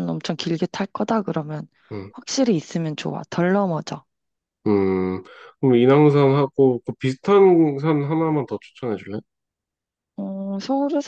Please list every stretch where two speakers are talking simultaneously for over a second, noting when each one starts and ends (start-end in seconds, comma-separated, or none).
none